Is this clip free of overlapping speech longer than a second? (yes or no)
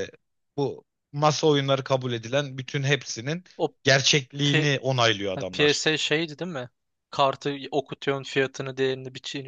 yes